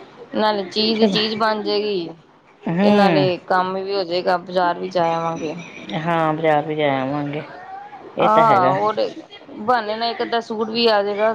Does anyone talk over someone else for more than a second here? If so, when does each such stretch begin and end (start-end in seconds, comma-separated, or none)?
none